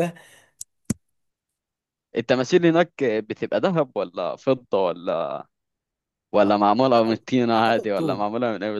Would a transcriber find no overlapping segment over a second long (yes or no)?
no